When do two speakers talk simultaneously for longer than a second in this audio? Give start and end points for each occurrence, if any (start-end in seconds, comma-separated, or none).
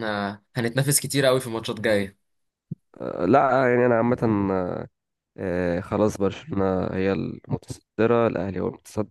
none